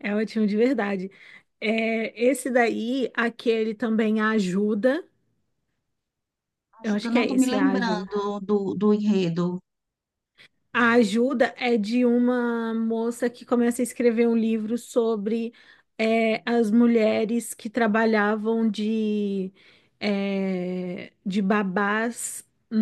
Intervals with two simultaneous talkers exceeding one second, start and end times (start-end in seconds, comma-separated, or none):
6.8-8.1